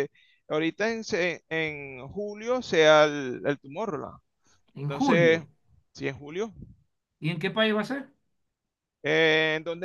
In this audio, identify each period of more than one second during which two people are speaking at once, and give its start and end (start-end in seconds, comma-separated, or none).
none